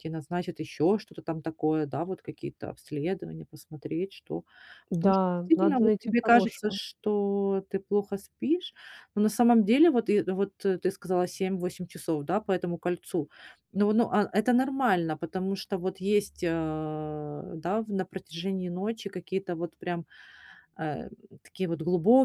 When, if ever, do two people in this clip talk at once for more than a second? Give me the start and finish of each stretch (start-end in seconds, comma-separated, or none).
4.9-6.8